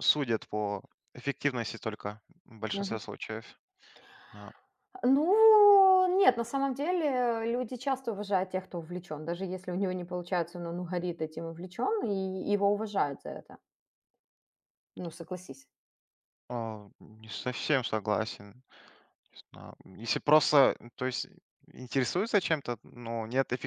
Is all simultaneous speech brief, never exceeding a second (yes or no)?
yes